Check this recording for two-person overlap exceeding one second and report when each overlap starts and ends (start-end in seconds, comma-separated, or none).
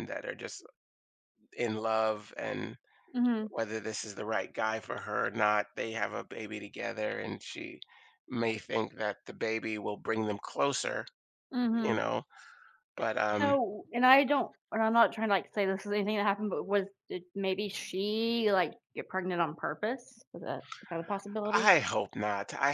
none